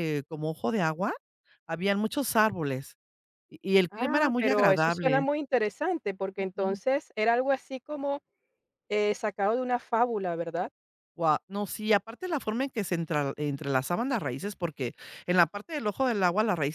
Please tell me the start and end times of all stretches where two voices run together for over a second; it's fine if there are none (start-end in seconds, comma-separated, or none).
3.9-5.3